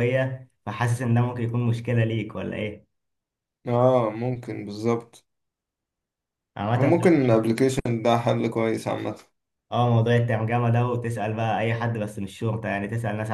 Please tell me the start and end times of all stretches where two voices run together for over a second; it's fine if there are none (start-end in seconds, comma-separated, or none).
none